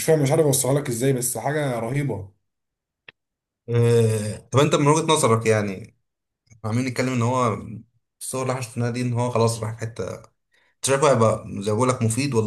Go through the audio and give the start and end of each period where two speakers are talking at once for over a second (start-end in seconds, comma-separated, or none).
none